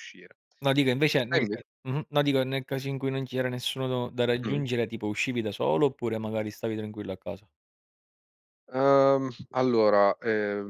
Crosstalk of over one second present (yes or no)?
no